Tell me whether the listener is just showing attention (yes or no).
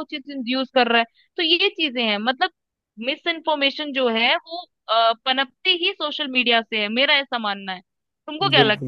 no